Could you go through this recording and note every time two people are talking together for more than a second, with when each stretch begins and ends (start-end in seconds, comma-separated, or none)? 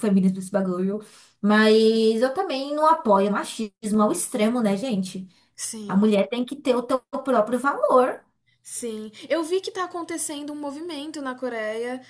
none